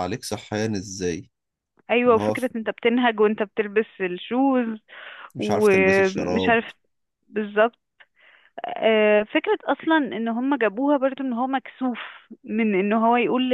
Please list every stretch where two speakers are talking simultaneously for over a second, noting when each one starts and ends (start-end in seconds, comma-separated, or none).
5.4-6.6